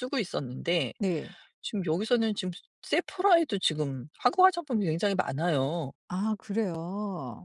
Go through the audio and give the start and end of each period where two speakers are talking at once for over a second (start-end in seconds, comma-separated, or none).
none